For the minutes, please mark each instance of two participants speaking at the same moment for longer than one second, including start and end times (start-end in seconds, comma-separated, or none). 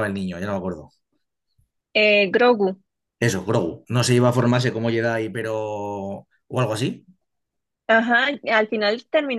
none